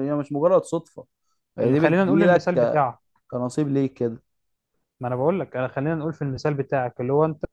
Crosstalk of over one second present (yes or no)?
yes